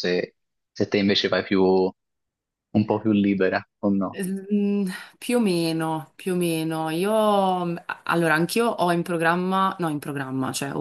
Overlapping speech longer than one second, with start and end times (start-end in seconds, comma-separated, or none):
none